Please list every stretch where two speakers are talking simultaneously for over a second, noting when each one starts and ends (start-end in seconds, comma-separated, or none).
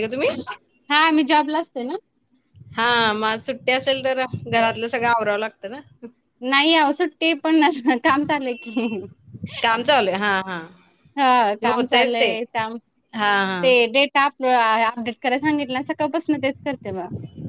none